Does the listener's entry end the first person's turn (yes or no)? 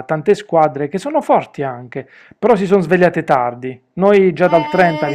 yes